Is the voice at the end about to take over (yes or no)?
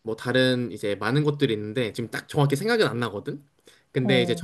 no